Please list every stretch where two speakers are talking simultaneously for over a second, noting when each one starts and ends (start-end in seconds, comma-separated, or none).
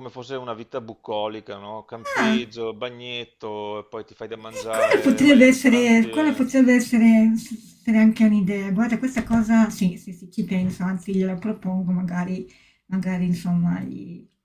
4.5-6.5